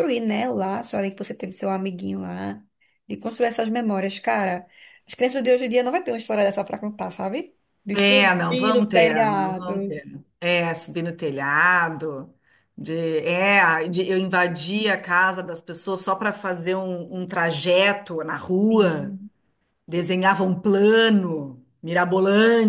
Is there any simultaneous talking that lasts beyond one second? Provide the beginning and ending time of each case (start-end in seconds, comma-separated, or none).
7.9-10.0